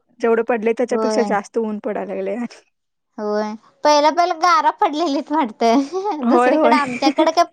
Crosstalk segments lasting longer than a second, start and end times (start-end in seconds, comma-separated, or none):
none